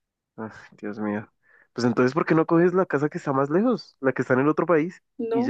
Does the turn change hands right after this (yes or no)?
yes